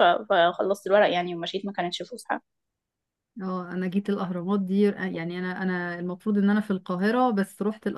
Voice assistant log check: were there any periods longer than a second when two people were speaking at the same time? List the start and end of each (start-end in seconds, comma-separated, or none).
none